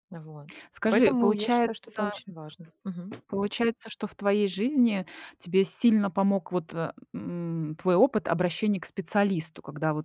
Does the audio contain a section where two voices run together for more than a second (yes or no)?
yes